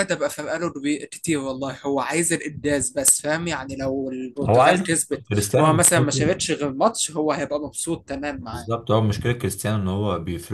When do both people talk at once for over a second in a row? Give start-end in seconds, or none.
4.4-6.4